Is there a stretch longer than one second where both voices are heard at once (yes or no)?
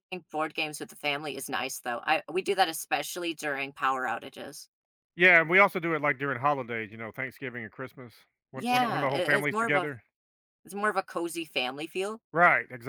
yes